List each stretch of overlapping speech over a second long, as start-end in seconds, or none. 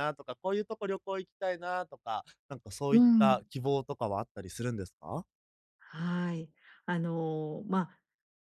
none